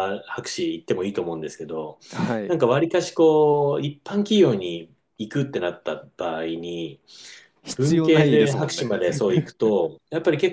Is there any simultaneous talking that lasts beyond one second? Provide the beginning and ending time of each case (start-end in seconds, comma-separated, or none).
7.7-9.0